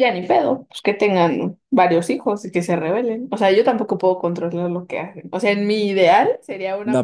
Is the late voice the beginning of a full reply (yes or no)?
yes